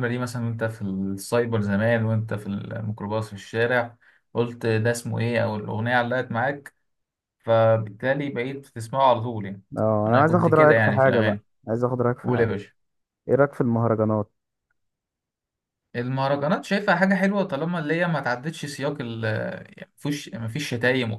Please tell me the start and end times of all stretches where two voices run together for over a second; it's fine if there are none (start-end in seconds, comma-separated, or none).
10.1-11.4